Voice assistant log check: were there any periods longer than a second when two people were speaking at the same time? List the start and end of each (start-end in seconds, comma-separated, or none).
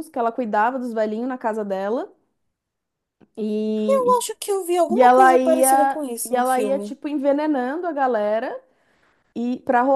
4.9-7.0